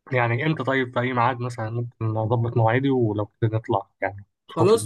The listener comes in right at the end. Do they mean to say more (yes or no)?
yes